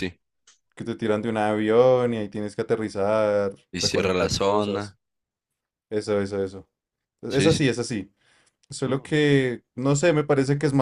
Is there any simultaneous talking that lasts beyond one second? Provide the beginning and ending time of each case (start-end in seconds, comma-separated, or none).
3.7-5.0